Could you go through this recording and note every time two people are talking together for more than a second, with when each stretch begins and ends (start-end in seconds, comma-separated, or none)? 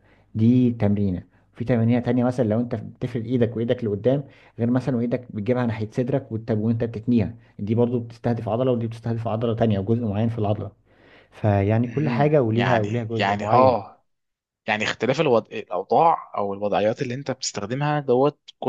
11.8-13.8